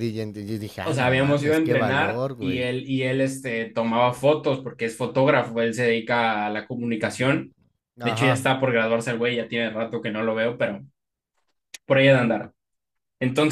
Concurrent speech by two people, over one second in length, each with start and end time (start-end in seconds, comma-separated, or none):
0.8-2.7